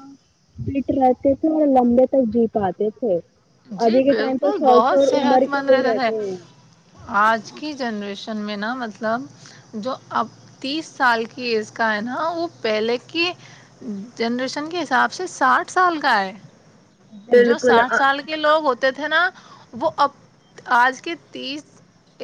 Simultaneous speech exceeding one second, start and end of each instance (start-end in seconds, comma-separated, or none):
3.9-6.1